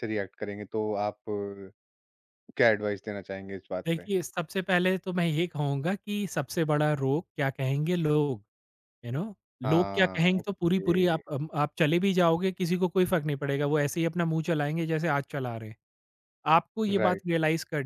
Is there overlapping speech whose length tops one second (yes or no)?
yes